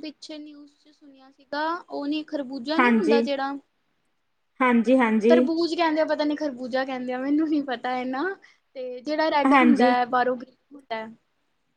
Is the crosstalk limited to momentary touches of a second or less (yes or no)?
yes